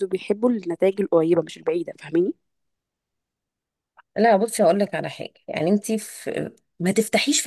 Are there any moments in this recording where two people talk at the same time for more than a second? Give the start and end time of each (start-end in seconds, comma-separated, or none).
none